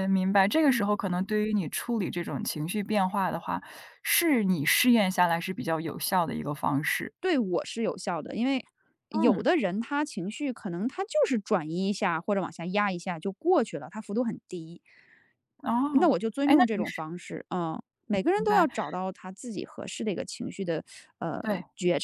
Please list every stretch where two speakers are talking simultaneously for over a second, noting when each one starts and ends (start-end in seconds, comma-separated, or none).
none